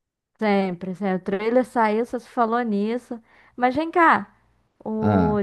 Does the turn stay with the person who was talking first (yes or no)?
yes